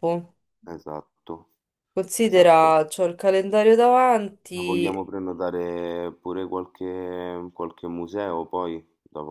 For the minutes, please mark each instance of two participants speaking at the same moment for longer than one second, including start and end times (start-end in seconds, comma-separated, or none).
none